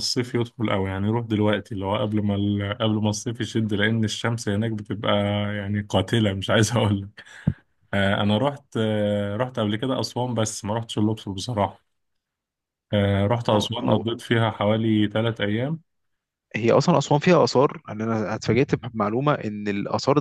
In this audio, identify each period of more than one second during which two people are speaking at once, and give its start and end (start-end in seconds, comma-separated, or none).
none